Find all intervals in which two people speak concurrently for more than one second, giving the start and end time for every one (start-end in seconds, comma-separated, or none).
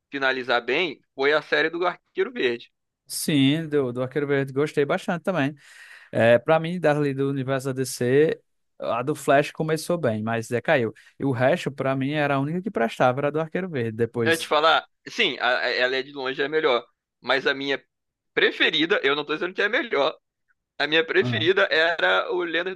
none